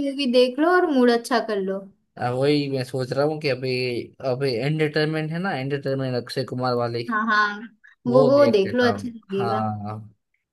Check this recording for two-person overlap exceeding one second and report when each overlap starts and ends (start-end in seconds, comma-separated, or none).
8.1-9.6